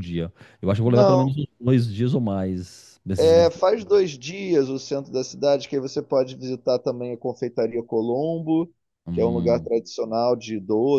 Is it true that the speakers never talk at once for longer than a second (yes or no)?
yes